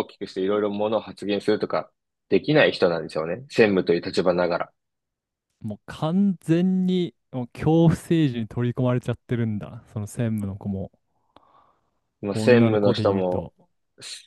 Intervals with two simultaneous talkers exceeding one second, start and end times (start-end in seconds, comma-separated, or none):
12.3-13.5